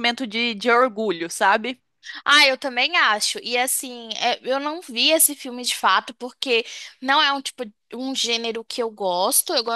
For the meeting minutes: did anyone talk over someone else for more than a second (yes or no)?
no